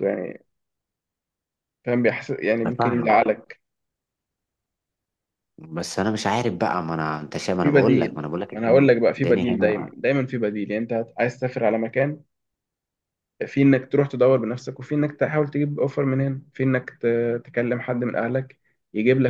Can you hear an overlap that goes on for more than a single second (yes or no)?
yes